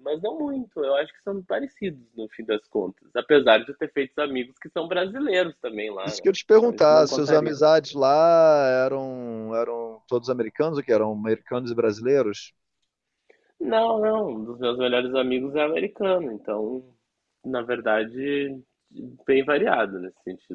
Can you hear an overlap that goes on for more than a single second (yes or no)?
yes